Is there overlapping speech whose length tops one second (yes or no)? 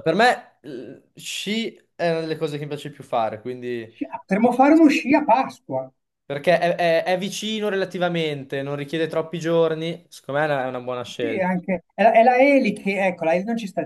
no